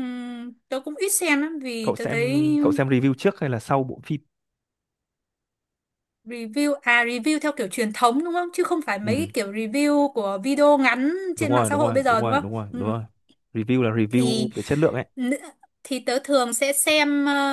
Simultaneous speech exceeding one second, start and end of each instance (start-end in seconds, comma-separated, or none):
11.3-12.9